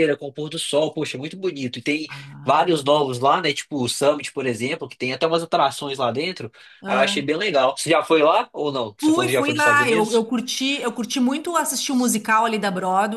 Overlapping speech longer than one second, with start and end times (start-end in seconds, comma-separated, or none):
9.0-10.3